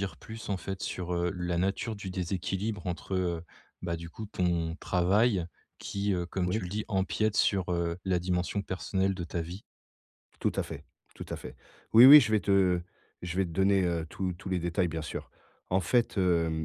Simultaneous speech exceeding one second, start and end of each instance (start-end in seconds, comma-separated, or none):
none